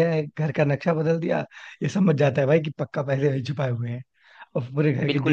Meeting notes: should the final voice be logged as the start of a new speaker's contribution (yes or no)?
no